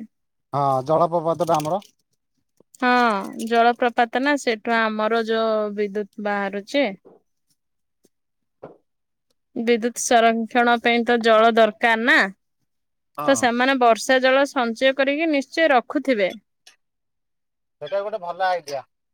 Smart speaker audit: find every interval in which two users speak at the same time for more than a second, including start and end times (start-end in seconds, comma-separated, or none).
none